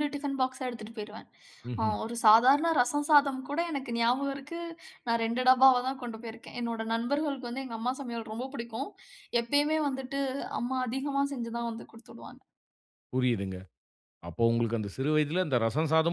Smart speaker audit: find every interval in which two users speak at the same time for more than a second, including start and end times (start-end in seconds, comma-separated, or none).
none